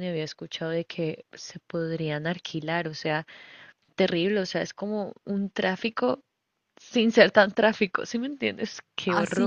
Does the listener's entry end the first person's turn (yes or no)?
yes